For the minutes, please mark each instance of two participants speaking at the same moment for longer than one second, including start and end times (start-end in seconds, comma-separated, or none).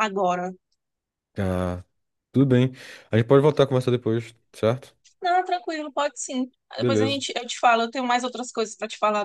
none